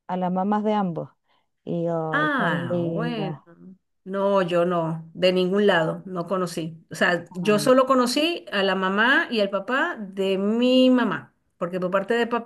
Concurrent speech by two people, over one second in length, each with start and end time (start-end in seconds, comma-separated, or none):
2.1-3.3